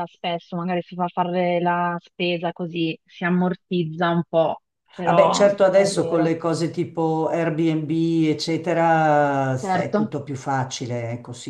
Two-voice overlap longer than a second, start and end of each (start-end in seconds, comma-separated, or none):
5.0-6.3